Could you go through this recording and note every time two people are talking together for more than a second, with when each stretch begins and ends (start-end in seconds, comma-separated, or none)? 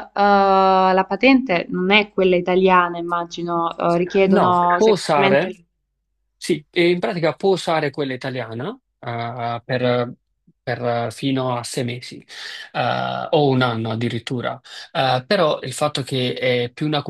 4.3-5.5